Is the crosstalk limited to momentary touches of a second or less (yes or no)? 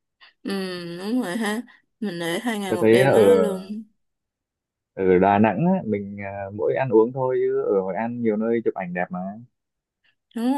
yes